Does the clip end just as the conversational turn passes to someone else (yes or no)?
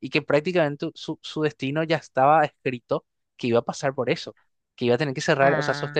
no